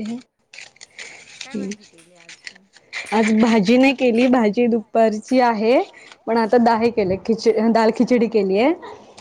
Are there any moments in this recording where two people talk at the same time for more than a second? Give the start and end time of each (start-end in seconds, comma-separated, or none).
none